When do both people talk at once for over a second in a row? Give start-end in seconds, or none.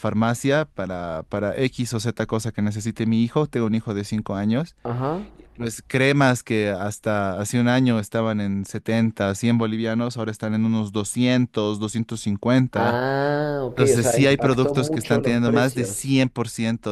13.7-16.2